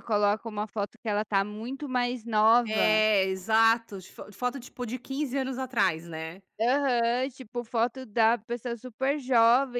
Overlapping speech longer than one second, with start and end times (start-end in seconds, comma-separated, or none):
none